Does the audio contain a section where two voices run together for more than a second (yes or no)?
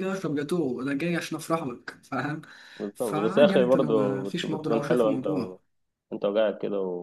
yes